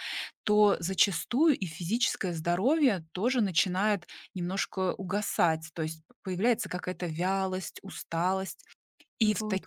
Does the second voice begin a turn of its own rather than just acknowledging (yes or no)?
no